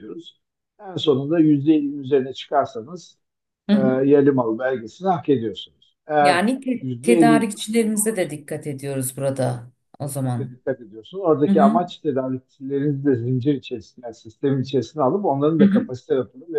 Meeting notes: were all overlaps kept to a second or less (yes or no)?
no